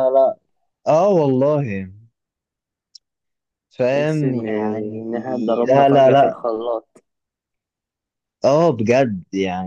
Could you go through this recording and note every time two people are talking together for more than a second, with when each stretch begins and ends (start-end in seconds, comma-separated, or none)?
3.9-6.4